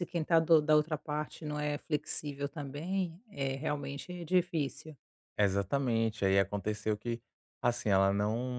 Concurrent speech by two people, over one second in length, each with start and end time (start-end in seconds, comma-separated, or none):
none